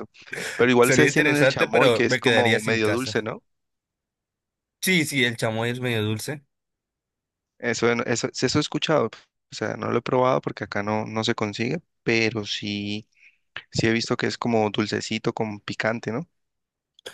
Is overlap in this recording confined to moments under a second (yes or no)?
no